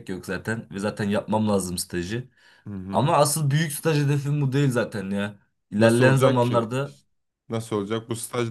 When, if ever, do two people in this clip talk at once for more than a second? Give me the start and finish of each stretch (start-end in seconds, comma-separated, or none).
5.8-7.0